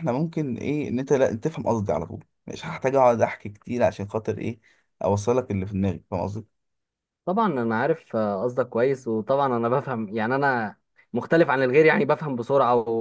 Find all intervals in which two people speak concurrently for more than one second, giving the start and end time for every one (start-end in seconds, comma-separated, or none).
none